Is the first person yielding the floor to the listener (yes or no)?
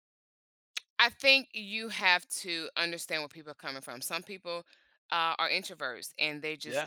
no